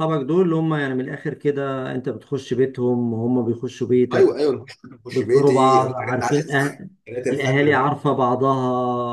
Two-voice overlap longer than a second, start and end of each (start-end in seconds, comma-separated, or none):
5.1-6.7